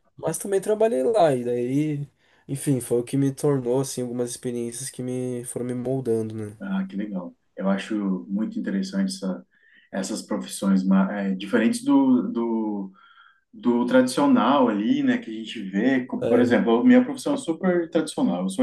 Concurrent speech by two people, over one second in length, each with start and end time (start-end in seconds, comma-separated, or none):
none